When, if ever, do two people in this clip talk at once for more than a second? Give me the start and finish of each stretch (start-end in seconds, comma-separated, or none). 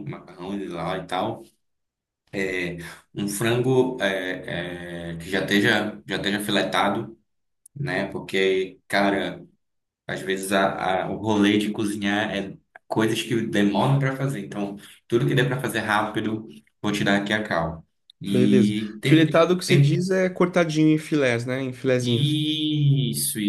18.3-20.1